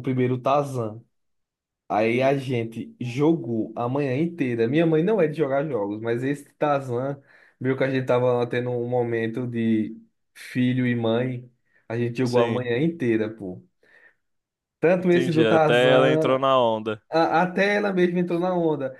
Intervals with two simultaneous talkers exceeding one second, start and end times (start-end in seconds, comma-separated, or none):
15.0-16.4